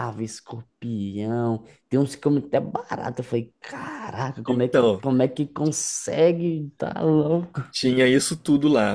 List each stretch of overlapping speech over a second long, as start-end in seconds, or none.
none